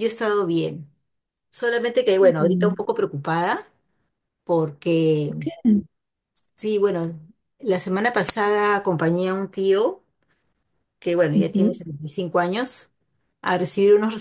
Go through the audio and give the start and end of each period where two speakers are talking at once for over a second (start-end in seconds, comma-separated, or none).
none